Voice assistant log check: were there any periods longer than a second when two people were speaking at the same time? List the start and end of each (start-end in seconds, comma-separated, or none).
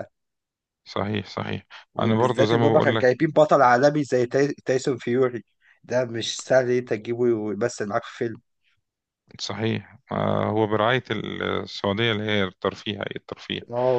1.9-3.2